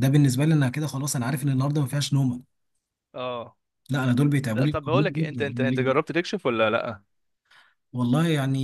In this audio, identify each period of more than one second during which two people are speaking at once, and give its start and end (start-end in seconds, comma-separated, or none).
4.5-6.0